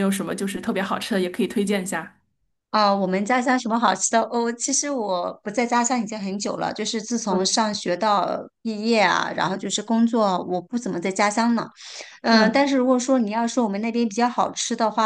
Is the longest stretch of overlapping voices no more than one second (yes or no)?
yes